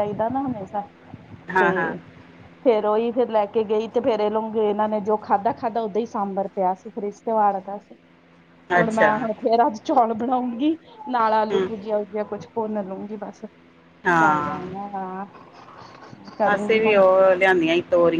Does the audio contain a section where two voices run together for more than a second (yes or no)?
no